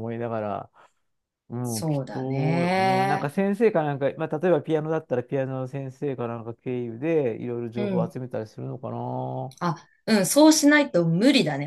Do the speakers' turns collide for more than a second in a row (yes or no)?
yes